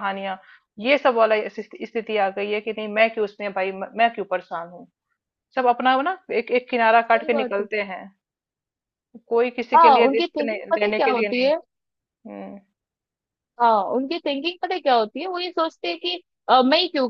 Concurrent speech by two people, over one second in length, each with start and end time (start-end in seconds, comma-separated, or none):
9.8-11.5